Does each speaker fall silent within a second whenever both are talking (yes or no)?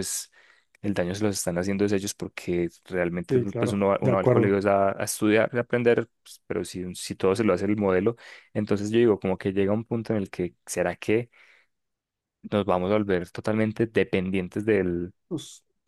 no